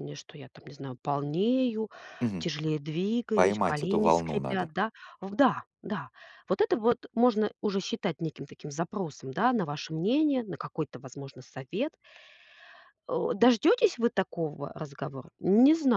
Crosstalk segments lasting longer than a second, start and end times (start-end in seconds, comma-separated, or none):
3.3-4.7